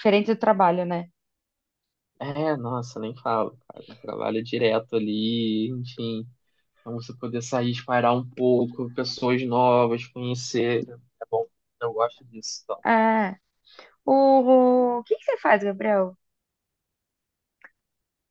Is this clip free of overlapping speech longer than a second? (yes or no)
yes